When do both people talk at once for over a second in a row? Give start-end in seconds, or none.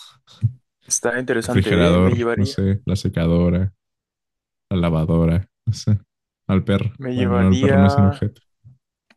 1.4-2.6, 7.0-8.3